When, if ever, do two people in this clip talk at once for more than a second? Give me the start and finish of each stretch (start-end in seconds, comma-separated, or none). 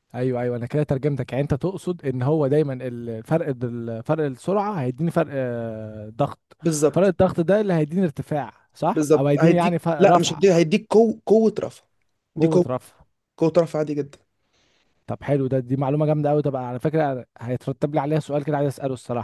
8.9-10.5